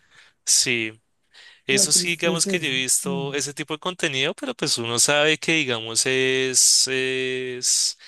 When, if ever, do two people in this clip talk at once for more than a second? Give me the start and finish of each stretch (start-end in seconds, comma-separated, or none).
1.7-3.4